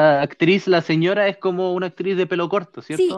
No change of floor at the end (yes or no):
no